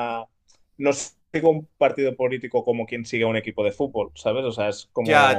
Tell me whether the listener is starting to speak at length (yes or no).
yes